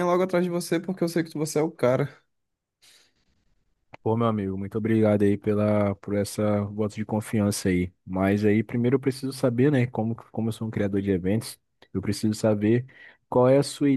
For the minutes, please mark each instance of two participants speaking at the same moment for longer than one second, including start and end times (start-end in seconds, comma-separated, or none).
none